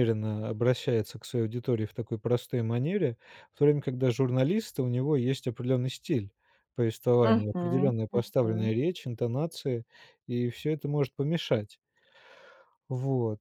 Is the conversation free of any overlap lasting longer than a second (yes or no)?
no